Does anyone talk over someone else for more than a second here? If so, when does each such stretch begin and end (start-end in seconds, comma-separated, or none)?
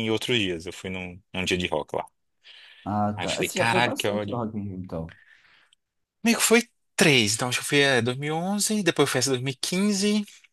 3.1-4.4